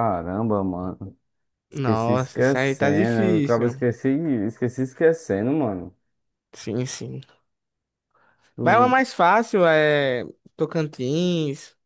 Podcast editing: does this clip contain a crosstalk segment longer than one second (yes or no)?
yes